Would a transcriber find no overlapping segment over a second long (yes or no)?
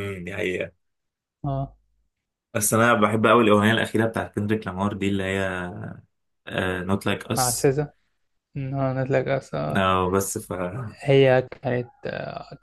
yes